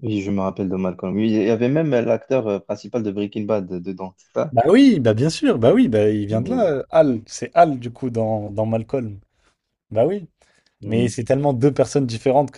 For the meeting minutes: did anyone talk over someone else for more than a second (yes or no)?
no